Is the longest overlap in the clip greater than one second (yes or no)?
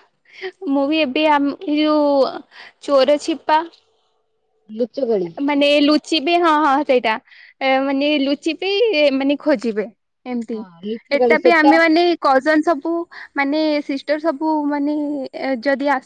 no